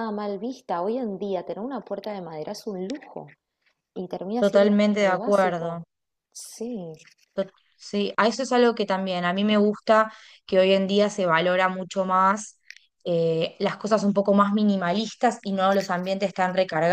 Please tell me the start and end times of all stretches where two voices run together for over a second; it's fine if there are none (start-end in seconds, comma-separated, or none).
4.4-5.8